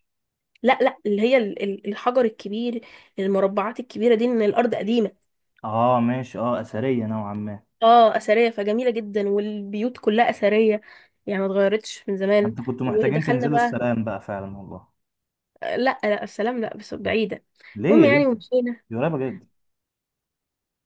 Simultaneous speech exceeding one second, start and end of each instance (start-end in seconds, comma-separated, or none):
12.4-13.8